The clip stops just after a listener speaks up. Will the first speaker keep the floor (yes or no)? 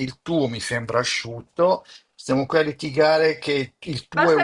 no